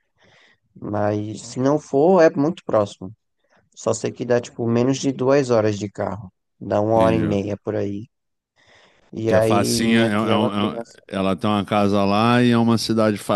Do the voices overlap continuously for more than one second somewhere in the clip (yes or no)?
yes